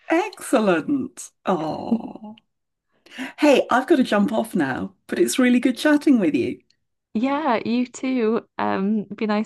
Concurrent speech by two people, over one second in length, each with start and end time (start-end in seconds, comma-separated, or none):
none